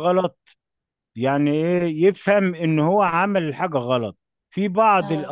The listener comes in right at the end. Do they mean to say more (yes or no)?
no